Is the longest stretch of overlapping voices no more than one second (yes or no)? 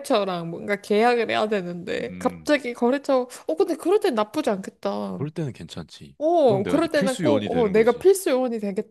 no